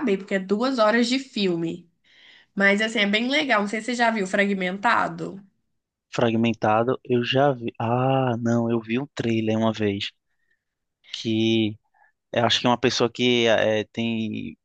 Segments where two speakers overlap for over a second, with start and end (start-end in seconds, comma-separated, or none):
none